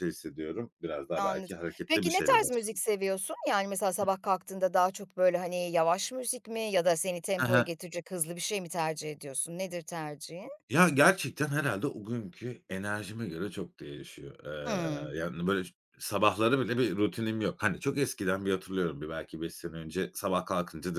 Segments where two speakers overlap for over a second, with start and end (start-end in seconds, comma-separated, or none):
1.2-2.8